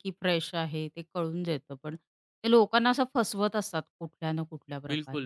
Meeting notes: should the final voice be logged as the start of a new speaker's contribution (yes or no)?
yes